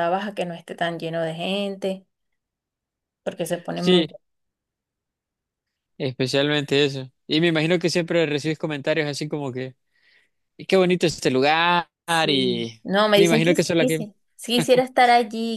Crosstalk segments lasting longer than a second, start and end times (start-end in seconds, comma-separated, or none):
12.3-14.1